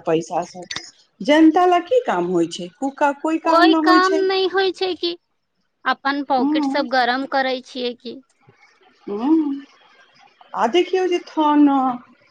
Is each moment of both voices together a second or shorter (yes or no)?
yes